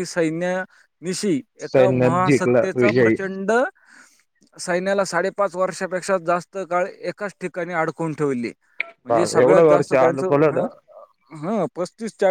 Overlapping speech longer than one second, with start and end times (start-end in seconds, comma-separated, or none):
1.7-3.2